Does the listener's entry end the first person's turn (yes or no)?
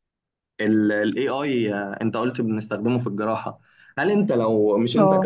no